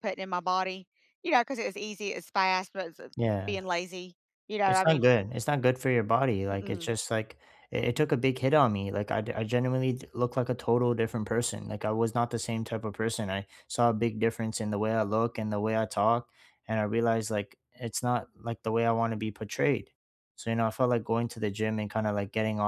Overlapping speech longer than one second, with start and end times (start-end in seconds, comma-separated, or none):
none